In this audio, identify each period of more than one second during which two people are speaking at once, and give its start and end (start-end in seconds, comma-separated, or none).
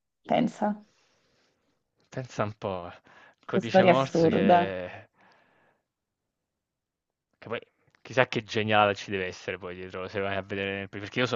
3.5-4.8